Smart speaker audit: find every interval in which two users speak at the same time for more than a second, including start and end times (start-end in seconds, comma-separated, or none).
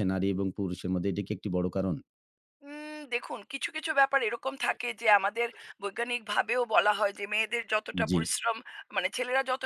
none